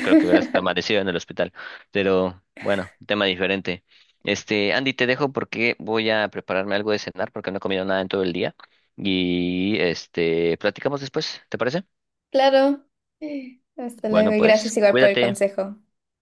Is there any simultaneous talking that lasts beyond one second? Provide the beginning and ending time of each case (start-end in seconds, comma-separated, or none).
14.1-15.4